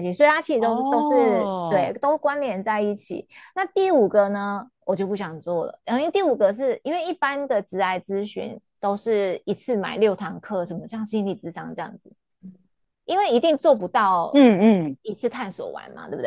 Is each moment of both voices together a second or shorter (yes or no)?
no